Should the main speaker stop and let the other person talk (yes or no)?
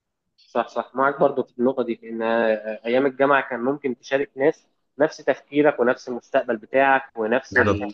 no